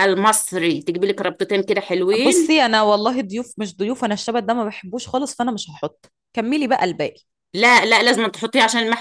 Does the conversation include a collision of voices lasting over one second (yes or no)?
no